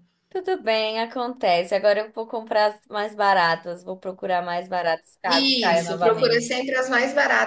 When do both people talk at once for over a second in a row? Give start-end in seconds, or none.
5.3-6.5